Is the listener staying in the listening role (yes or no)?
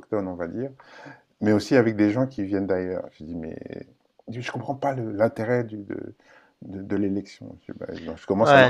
no